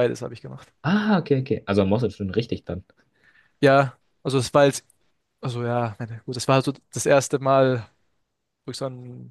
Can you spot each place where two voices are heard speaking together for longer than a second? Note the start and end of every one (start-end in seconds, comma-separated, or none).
none